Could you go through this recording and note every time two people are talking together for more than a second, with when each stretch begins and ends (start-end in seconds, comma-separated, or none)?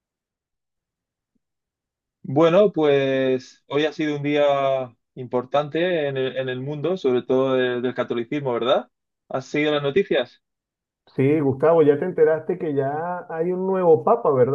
none